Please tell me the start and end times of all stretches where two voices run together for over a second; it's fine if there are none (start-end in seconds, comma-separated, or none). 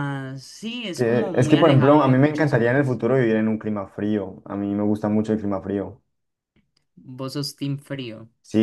0.9-3.0